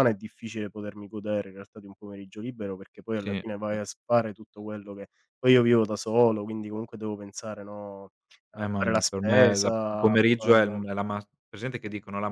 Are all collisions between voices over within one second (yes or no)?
no